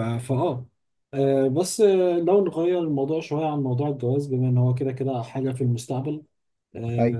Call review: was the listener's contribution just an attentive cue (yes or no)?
yes